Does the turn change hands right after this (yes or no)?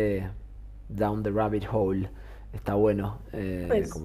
no